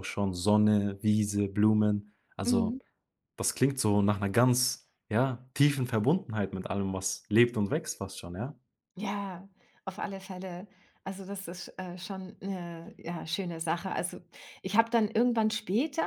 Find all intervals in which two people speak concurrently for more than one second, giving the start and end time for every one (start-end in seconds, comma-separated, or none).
none